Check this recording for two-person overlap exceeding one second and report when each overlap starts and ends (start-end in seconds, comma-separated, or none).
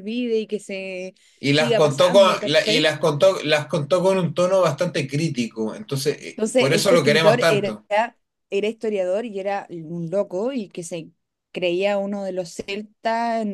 1.5-2.9, 6.3-7.8